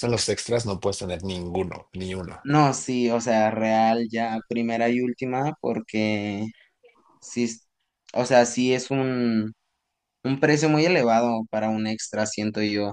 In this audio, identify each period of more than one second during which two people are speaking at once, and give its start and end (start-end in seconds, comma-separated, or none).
none